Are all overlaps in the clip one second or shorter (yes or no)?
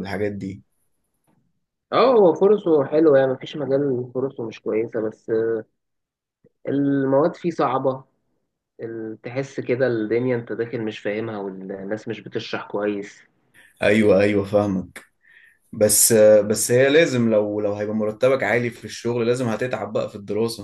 yes